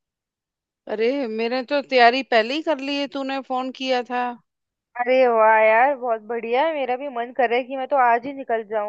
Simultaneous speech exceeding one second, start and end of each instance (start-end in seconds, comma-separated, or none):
none